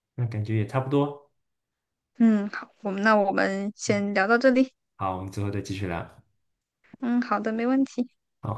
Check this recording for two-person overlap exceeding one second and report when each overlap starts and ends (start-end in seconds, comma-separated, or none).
none